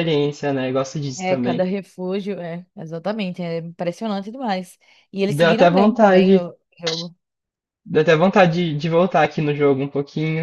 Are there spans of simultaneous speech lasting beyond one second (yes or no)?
yes